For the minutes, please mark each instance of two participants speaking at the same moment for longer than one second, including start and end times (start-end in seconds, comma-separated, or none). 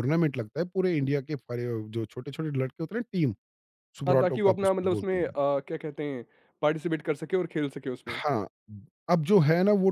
4.1-5.3